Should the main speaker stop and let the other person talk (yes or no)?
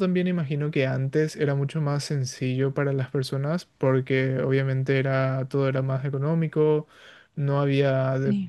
no